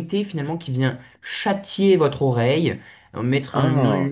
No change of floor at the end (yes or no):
yes